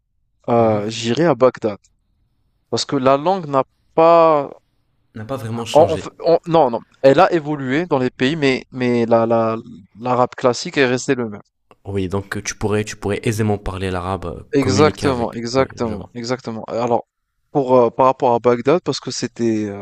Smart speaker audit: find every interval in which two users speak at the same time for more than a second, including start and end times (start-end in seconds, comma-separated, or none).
14.5-16.1